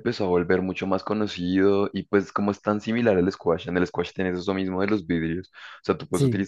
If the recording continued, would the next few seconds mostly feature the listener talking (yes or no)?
no